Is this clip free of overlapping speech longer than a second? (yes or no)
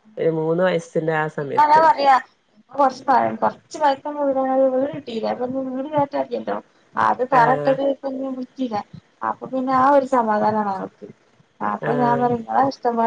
yes